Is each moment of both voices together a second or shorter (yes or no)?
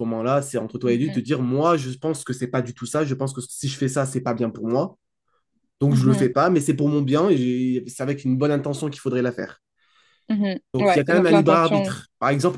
no